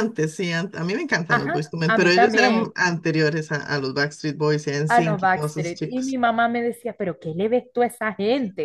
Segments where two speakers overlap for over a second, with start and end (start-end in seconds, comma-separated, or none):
1.3-2.7, 4.9-6.2